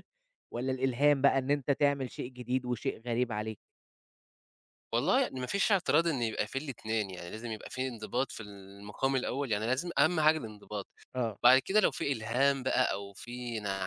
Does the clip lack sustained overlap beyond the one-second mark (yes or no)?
yes